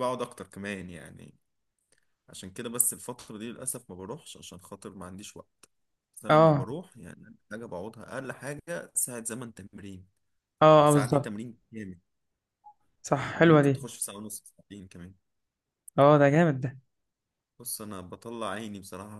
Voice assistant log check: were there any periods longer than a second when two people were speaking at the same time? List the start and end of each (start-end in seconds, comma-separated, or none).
none